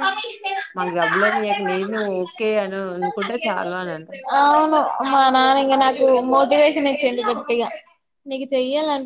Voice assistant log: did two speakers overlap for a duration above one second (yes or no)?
no